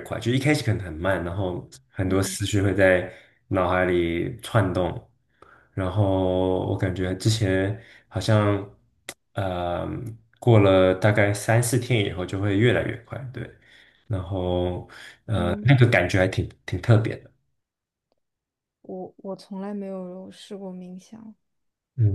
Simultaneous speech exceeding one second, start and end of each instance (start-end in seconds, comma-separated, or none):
none